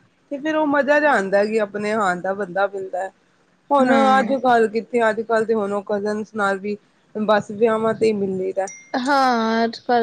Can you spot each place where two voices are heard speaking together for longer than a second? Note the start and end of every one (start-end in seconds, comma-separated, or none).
none